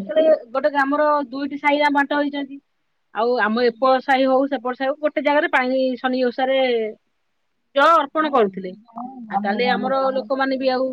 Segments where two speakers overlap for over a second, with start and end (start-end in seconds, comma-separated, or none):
8.3-10.3